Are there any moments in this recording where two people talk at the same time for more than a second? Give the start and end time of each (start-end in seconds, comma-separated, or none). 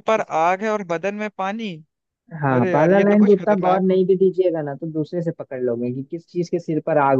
2.5-4.0